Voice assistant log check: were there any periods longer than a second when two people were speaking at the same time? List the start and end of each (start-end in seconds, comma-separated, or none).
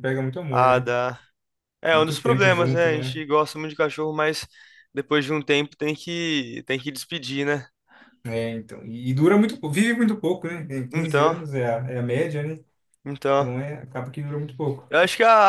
1.9-3.2